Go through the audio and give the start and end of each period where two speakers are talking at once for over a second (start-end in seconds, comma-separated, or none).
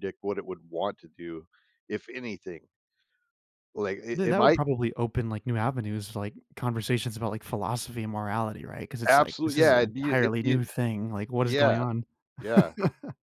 9.1-10.6